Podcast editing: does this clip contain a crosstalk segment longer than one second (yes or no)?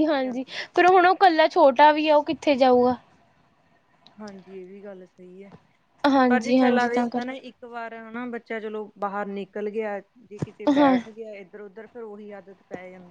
yes